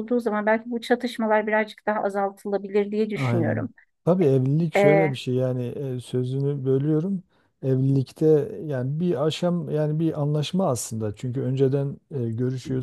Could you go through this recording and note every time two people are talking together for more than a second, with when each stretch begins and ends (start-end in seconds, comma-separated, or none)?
none